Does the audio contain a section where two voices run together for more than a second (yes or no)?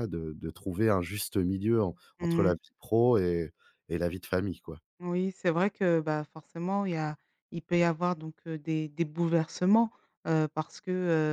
no